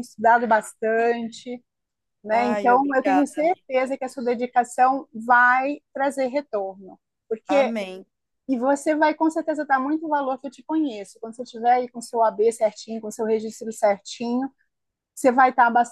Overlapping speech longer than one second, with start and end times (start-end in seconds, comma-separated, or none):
2.3-3.6